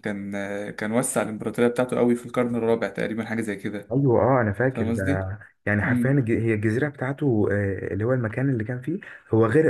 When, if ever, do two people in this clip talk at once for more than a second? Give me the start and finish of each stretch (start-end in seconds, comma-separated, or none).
none